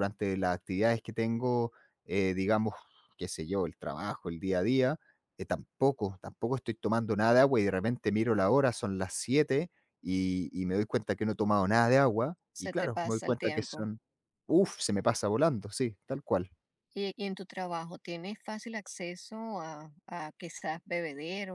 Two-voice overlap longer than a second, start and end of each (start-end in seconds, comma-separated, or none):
12.5-13.9